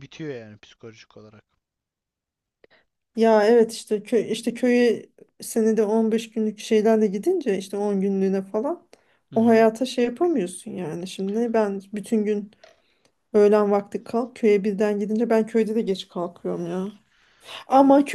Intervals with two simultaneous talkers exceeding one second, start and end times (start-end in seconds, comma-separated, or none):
none